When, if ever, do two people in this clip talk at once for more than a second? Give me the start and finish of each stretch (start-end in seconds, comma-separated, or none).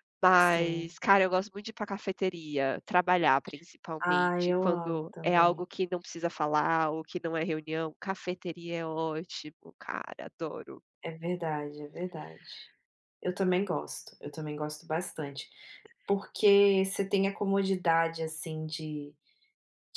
4.0-5.7